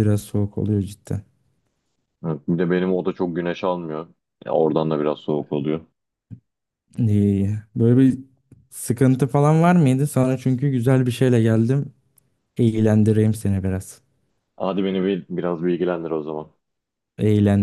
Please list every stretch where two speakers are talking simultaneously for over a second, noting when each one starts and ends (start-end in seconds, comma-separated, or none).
none